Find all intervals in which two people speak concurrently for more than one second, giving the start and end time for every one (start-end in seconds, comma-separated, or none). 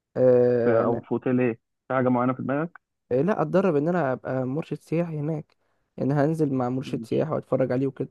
none